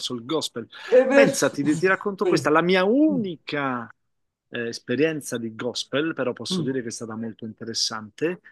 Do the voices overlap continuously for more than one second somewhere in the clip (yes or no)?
yes